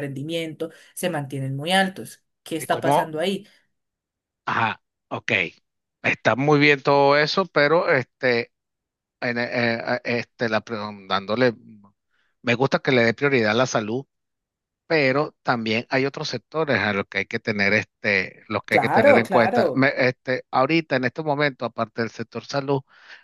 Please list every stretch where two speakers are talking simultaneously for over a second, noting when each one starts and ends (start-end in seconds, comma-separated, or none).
18.7-19.9